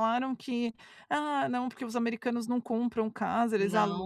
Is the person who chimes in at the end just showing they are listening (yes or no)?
no